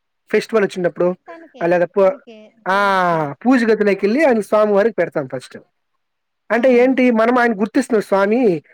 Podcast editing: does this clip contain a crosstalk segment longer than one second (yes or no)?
no